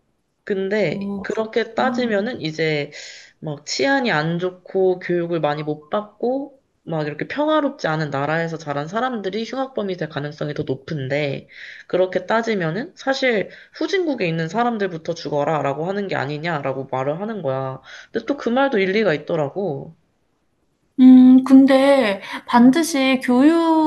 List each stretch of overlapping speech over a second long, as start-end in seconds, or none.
0.9-2.3